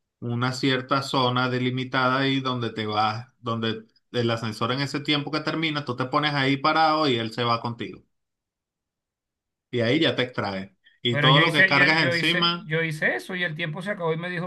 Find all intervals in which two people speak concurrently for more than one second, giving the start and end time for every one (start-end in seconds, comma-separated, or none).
11.1-12.7